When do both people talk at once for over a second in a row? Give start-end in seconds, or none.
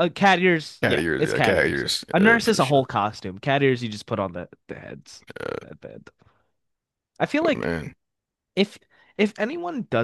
0.8-2.8